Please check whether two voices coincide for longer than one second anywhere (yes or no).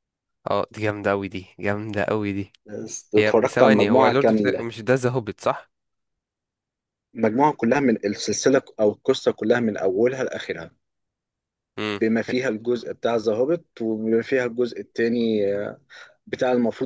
yes